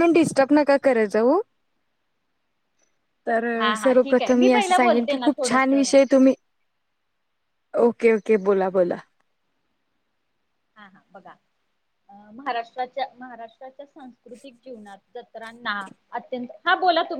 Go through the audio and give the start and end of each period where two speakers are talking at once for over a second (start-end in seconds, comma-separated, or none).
3.8-5.9